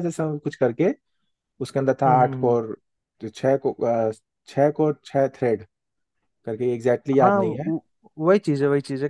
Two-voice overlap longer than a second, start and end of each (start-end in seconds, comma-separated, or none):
none